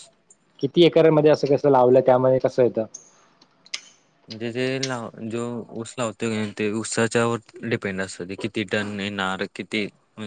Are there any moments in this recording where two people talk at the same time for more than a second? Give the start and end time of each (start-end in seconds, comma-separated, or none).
none